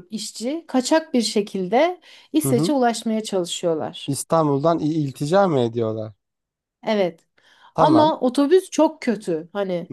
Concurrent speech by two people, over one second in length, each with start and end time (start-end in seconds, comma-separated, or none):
none